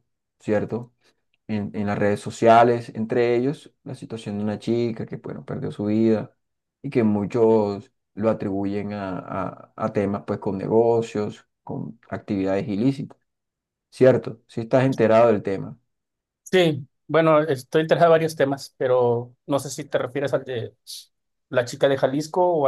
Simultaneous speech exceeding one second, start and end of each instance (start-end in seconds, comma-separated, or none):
none